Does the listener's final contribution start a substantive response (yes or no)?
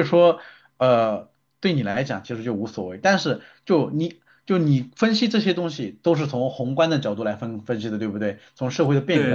yes